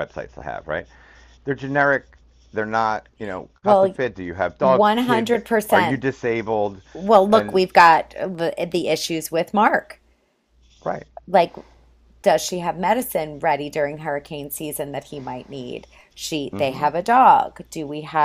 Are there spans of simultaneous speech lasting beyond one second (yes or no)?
yes